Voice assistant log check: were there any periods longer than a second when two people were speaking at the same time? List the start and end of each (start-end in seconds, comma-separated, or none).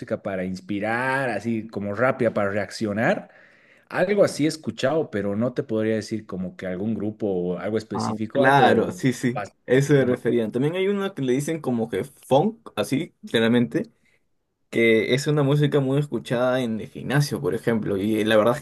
7.9-9.8